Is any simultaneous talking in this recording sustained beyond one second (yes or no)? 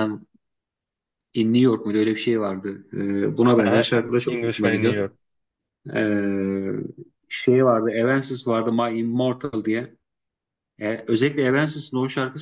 yes